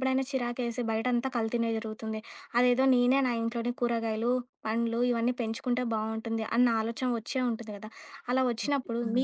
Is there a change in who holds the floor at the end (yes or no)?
no